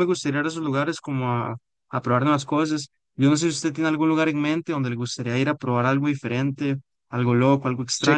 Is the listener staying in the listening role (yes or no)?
no